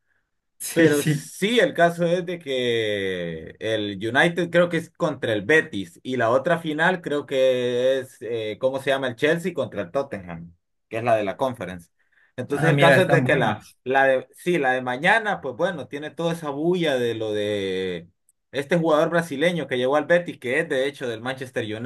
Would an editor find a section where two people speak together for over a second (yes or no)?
yes